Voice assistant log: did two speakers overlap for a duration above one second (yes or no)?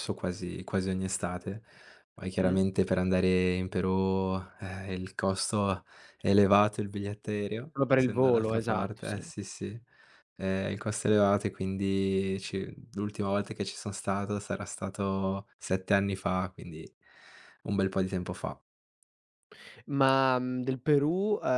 yes